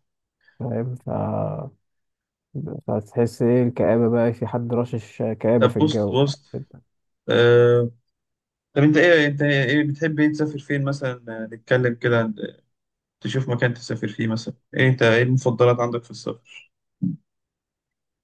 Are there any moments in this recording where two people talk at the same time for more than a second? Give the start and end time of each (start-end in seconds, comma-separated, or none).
none